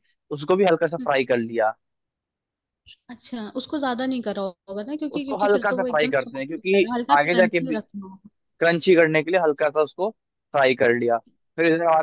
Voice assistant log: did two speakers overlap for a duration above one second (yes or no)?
yes